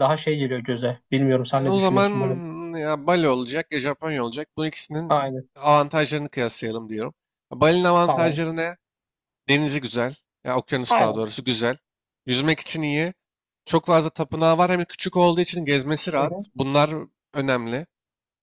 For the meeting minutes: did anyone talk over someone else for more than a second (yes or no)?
no